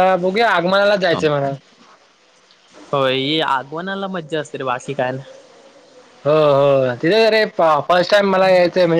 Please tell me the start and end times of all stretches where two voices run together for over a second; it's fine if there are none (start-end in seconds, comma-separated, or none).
none